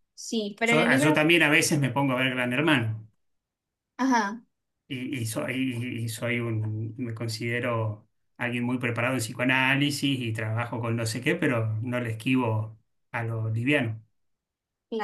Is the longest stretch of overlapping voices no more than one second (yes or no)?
yes